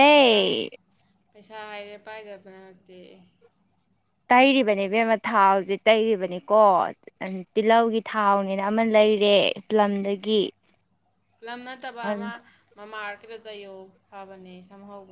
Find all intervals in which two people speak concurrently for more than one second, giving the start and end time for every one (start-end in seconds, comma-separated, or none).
none